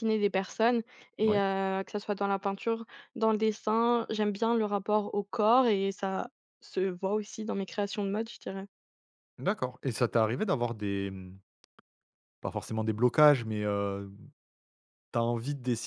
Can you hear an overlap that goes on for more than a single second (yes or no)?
no